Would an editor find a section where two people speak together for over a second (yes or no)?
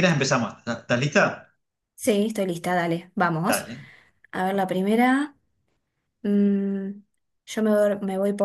no